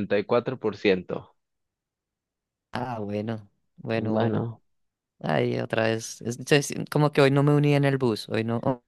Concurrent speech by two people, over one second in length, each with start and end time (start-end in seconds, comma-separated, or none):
none